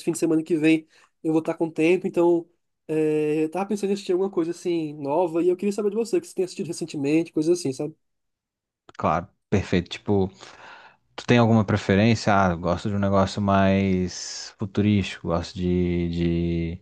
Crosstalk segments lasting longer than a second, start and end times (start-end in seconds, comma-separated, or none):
none